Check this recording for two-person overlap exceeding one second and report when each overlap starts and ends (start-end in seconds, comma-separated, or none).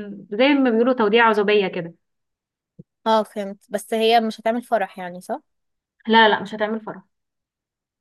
none